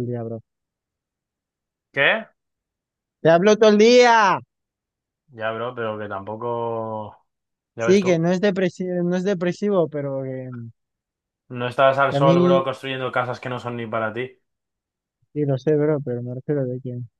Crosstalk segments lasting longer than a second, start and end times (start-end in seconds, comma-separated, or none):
none